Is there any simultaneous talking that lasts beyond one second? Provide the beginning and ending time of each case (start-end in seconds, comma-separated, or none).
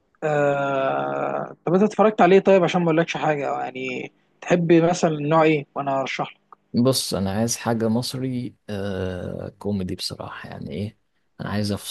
none